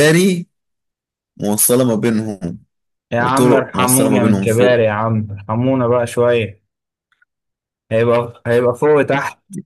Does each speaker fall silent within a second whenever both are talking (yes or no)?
no